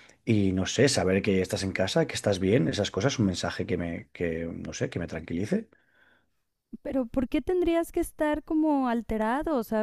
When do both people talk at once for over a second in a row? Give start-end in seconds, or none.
none